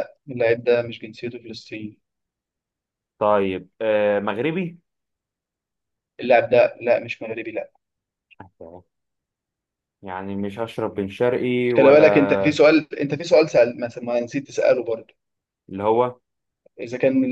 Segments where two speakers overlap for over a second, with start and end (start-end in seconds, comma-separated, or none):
none